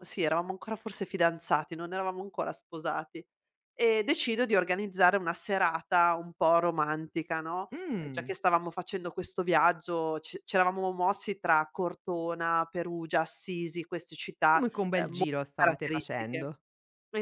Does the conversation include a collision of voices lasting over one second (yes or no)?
yes